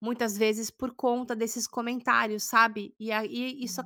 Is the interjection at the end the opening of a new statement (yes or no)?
no